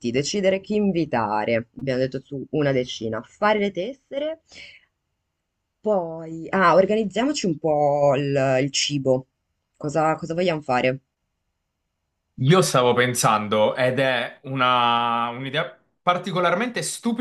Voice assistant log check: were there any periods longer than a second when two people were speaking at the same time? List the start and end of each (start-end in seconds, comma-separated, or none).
none